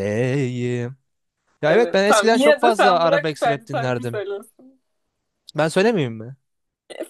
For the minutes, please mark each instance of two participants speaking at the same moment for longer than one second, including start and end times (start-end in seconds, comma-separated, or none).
1.7-4.2